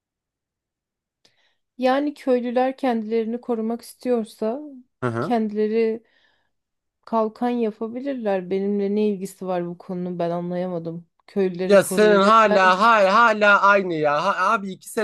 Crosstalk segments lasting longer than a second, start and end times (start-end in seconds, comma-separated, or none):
11.6-12.8